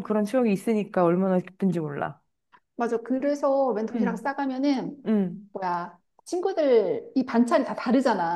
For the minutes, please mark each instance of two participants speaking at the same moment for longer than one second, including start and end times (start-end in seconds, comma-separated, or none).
none